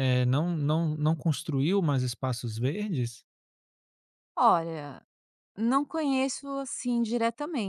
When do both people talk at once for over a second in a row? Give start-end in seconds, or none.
none